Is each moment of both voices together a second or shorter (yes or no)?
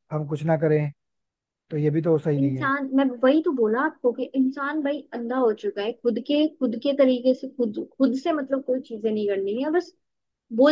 yes